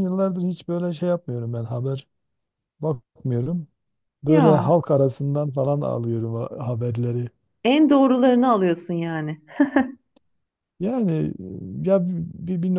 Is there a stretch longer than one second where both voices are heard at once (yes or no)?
no